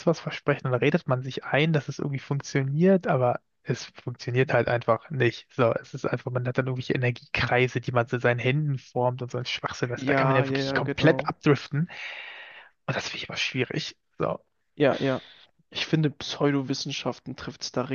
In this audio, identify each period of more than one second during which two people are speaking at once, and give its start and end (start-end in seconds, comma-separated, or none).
9.9-11.3